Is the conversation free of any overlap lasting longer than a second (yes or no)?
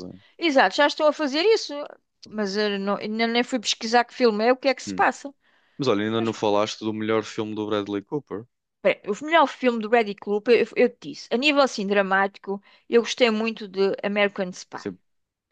yes